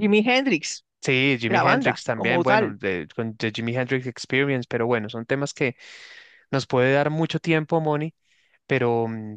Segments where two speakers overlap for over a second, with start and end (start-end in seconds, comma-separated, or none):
1.5-2.8